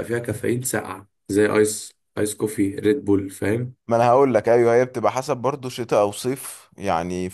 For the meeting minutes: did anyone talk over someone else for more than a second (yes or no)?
no